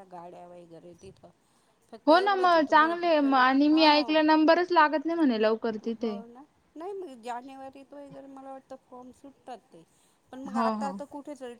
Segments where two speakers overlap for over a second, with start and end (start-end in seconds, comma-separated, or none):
2.1-4.1